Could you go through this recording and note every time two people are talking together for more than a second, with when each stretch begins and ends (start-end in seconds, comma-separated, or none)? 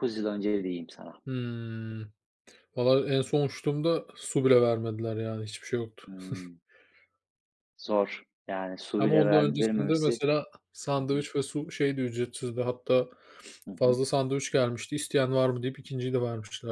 9.0-10.2